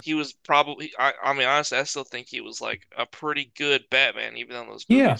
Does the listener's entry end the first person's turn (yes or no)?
yes